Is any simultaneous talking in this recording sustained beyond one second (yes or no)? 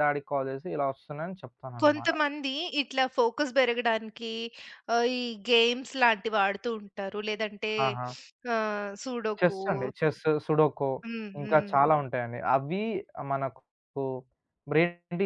no